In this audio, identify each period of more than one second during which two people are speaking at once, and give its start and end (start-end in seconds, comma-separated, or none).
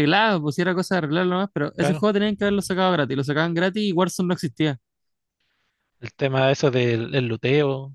none